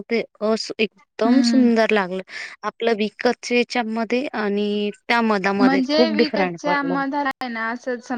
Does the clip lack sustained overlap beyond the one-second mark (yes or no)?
no